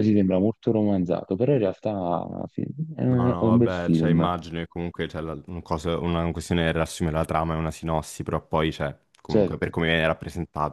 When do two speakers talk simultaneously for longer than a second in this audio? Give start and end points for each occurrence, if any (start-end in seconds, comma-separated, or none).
3.1-4.4